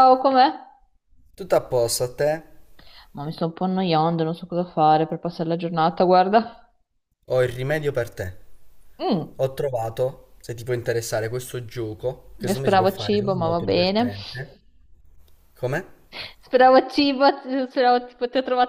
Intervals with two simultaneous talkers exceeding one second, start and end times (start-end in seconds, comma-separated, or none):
12.5-14.1